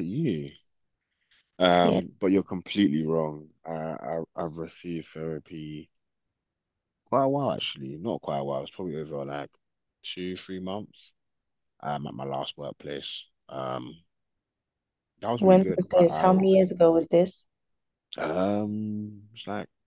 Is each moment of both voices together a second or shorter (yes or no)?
no